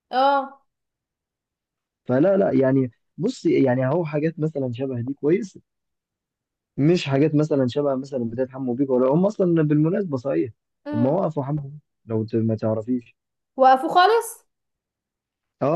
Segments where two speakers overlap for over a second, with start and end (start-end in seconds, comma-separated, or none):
none